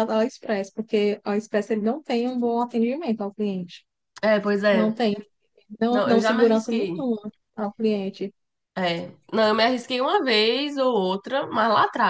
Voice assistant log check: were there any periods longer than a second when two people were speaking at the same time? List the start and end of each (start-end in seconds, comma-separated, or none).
5.9-7.1